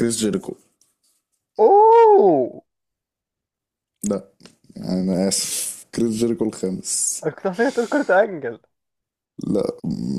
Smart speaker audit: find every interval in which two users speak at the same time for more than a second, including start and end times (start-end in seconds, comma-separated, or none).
none